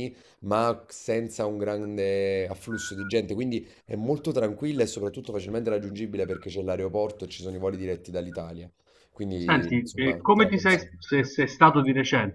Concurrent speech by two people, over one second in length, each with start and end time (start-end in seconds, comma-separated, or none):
9.3-11.0